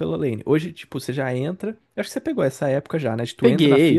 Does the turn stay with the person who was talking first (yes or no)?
yes